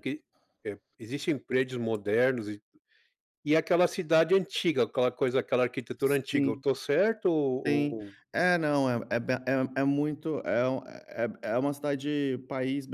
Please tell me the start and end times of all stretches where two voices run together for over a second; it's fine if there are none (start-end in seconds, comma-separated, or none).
none